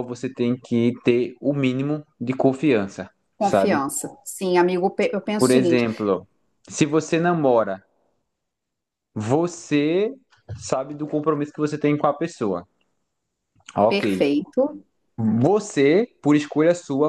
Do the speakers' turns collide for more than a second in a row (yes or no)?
no